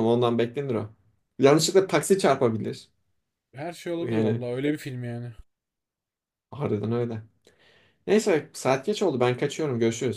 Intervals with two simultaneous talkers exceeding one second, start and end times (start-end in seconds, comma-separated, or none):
none